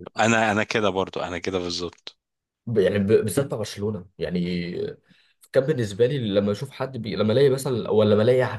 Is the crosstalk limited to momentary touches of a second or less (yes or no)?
yes